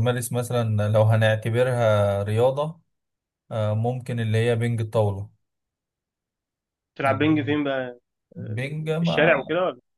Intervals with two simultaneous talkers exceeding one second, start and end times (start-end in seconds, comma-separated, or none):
none